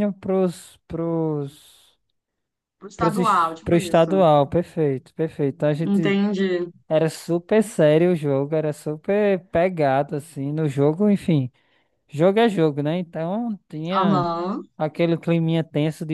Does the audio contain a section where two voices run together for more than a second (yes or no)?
yes